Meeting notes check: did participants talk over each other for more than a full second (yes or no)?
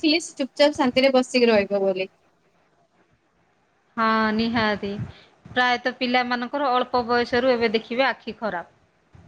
no